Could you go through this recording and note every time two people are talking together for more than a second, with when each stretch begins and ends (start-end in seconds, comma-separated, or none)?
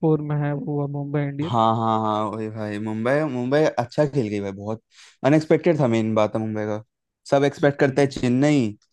none